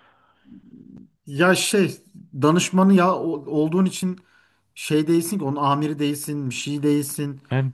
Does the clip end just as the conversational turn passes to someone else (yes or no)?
yes